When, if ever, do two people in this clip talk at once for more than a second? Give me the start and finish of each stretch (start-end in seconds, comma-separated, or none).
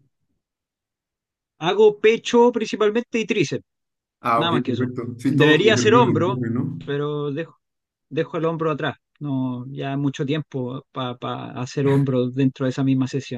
4.3-6.4